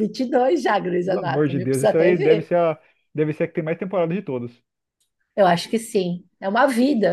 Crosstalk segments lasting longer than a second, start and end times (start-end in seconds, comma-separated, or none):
1.0-2.5